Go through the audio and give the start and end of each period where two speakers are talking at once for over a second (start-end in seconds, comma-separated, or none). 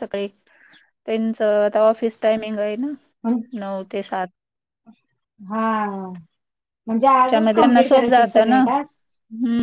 7.2-8.6